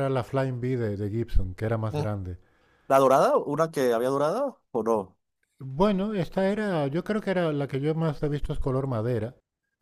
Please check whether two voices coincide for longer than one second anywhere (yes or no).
no